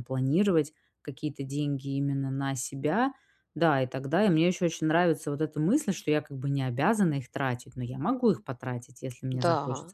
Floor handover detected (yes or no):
yes